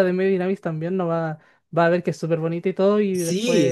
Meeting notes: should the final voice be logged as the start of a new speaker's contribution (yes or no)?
yes